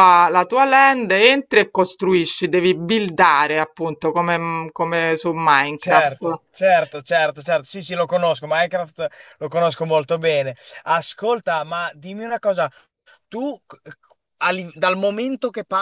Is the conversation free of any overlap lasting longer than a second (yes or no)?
yes